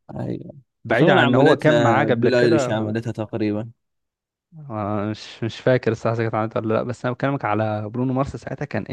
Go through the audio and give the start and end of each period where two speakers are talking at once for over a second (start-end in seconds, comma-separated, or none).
0.9-2.9